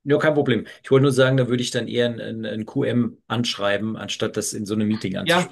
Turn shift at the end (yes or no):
yes